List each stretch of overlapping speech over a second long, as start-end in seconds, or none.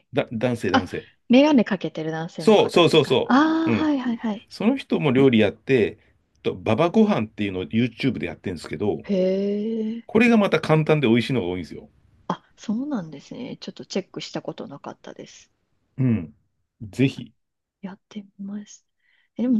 2.4-3.9